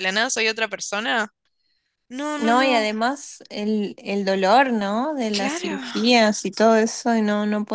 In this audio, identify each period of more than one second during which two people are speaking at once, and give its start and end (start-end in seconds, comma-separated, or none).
none